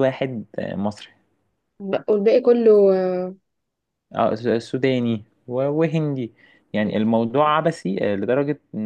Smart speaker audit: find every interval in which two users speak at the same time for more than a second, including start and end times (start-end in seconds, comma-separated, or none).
none